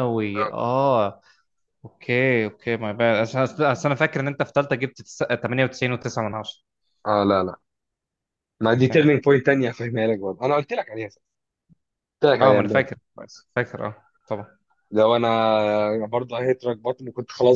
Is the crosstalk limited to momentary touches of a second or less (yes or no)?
yes